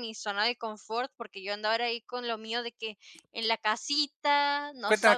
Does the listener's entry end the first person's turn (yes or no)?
yes